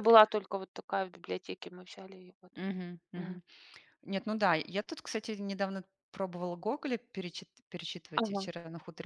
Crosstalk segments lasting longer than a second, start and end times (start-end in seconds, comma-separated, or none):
none